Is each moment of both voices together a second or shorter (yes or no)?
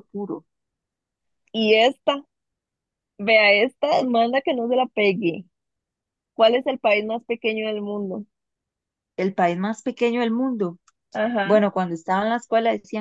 yes